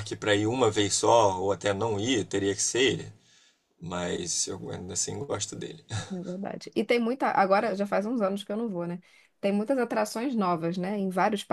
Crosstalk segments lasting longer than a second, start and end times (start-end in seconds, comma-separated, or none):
none